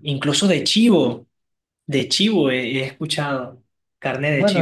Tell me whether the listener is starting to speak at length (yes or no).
yes